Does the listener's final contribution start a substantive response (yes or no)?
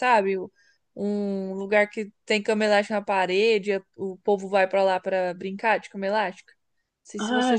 yes